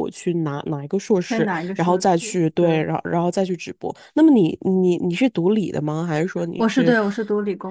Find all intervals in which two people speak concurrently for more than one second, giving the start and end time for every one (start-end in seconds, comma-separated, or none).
1.3-2.9